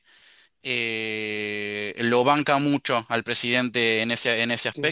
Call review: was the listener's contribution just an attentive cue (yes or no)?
no